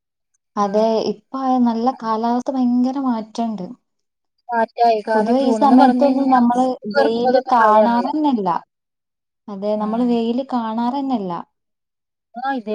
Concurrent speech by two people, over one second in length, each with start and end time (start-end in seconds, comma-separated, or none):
5.1-8.1